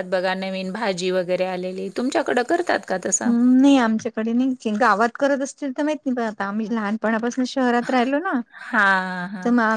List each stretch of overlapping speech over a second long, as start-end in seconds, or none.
none